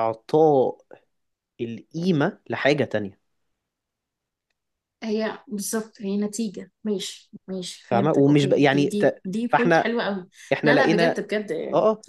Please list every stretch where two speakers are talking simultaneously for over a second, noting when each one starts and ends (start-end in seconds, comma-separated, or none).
7.9-9.9